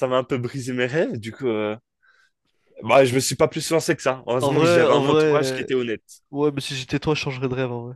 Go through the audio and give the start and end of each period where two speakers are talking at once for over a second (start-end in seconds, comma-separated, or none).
4.4-5.7